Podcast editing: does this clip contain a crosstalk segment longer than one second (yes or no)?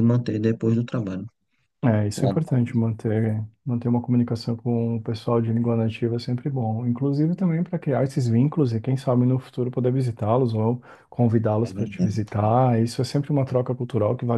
no